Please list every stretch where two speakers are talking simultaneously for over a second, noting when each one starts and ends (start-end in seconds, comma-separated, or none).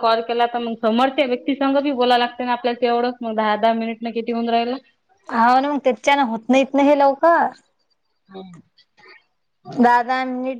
none